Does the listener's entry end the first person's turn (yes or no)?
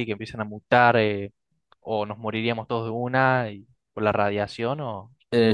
yes